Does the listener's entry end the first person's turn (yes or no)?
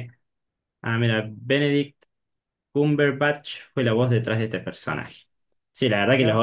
no